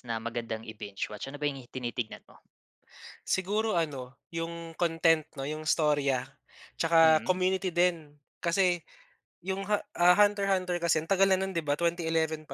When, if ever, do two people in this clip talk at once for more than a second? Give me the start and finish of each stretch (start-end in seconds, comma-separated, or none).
none